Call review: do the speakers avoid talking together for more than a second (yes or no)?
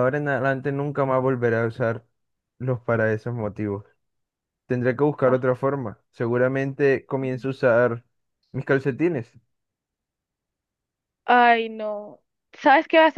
yes